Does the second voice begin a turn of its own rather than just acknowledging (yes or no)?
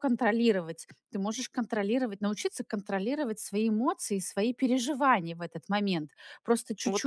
yes